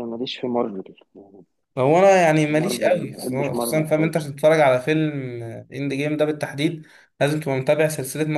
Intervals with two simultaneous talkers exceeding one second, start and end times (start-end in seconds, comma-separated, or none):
2.6-4.2